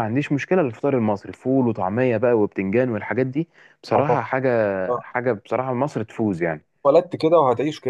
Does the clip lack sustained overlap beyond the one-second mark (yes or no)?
yes